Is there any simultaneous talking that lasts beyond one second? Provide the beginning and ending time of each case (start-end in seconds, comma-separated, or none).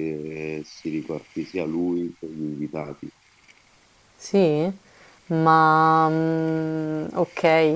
none